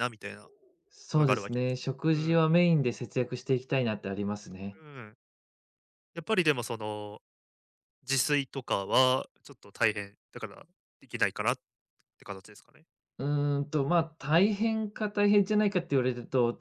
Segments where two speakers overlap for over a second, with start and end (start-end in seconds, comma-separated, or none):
1.1-2.4